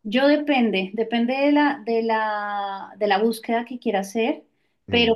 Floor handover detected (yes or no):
no